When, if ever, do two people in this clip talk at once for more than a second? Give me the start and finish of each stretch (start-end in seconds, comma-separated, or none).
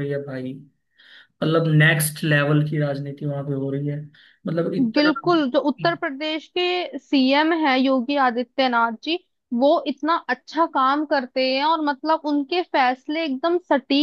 none